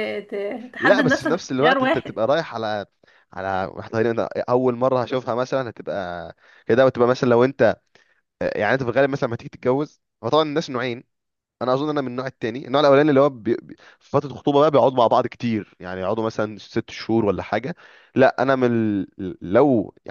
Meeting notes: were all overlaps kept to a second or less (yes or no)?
no